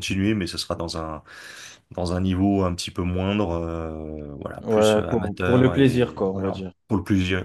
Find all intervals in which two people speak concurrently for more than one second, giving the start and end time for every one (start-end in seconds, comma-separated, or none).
4.6-6.7